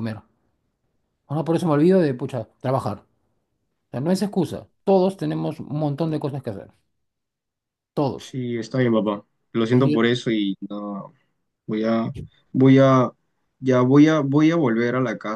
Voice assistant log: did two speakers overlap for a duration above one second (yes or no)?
no